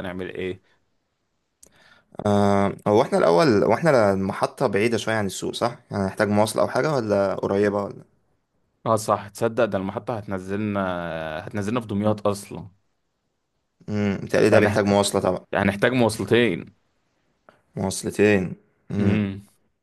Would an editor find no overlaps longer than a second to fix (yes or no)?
yes